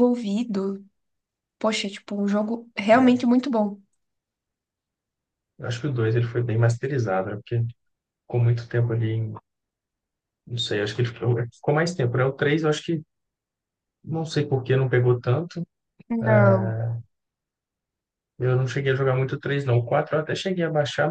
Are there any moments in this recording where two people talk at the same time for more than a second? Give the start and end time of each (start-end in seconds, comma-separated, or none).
none